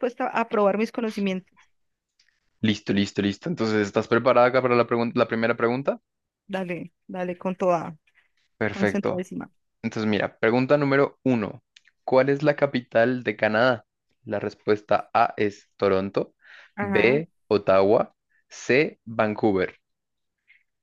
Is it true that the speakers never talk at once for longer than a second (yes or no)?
yes